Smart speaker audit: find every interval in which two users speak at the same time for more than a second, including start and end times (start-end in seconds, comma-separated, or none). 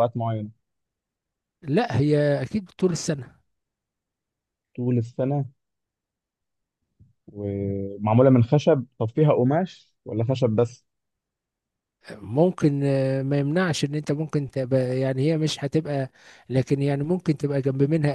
none